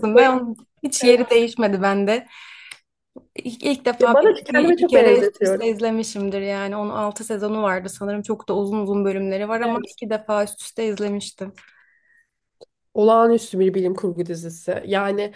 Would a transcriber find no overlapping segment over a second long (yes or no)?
no